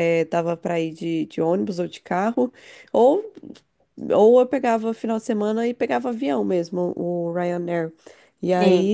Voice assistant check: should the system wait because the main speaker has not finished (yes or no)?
yes